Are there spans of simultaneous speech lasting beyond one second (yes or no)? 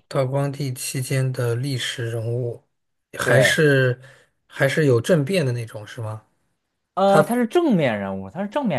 no